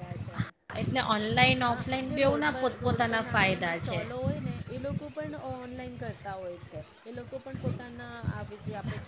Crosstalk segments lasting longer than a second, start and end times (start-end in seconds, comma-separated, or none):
1.7-4.0